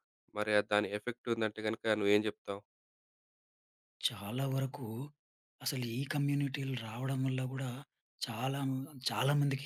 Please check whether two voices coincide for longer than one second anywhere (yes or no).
no